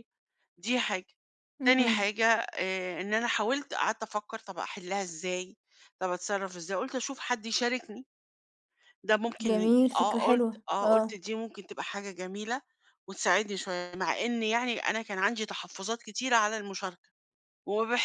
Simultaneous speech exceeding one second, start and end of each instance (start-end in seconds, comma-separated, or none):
9.4-11.2